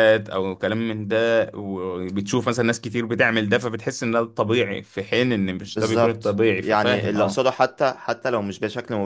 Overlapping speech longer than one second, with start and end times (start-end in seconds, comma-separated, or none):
5.6-7.4